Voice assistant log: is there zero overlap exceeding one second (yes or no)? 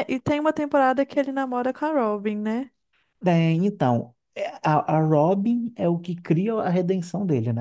yes